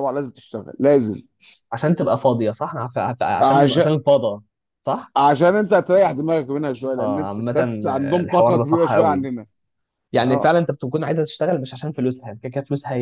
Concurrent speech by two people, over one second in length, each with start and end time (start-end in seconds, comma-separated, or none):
7.0-9.3